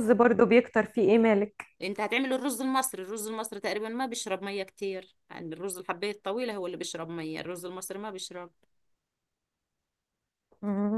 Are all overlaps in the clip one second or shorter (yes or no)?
yes